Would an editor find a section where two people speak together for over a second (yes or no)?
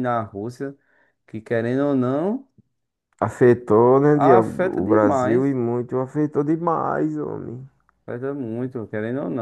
yes